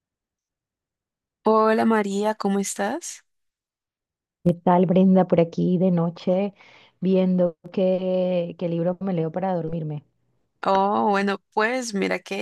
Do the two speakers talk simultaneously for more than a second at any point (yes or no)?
no